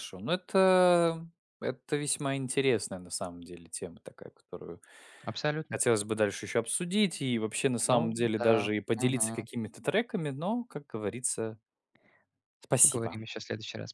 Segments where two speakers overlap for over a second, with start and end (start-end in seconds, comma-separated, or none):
7.9-9.4